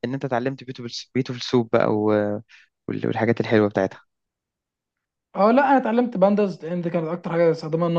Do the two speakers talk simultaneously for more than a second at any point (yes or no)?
no